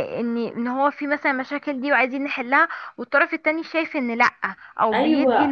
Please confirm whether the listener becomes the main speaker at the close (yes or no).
yes